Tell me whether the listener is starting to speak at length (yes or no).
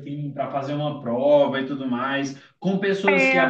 no